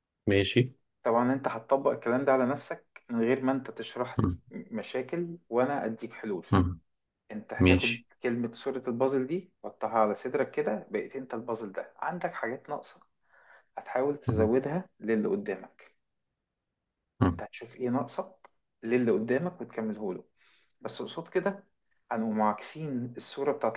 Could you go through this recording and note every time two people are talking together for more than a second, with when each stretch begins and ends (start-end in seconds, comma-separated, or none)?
none